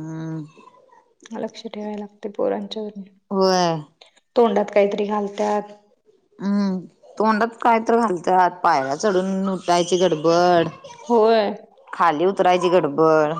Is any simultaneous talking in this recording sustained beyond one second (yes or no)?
no